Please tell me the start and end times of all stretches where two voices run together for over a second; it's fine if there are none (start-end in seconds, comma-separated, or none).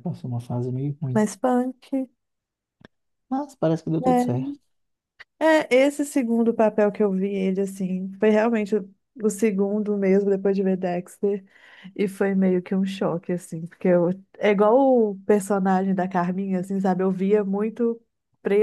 none